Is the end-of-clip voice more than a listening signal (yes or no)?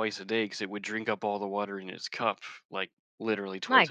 yes